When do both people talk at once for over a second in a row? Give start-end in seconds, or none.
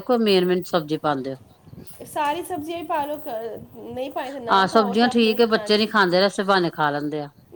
4.6-5.9